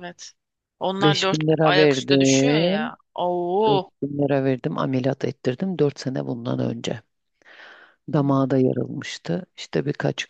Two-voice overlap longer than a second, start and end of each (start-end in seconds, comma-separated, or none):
1.0-2.9